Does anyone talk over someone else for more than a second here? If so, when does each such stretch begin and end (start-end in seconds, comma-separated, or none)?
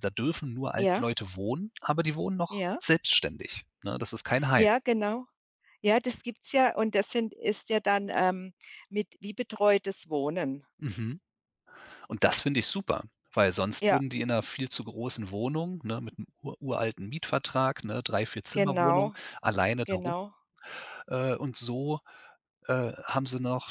none